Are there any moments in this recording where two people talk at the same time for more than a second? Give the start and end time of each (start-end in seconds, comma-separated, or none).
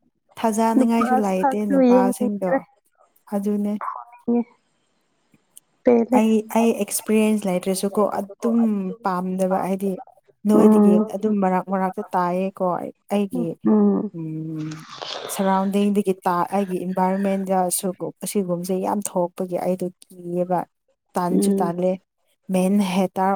0.8-2.5